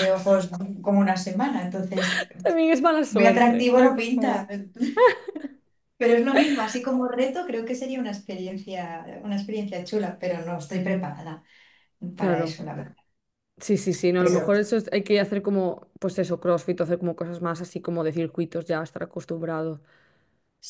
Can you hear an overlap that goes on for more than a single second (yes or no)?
yes